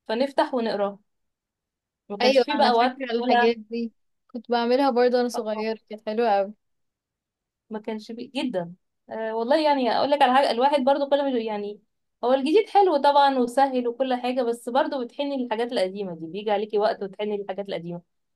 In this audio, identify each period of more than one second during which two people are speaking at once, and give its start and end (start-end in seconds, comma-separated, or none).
2.2-3.5